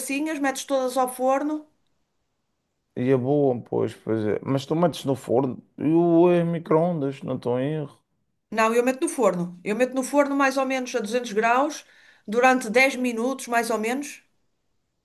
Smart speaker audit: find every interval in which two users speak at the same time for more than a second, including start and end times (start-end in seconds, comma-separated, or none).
none